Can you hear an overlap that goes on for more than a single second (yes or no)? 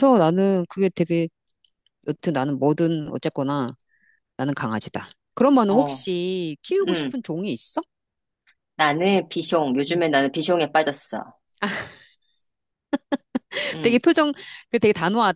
no